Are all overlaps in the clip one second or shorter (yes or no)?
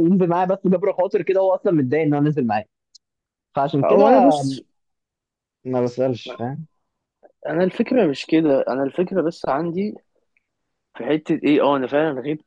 yes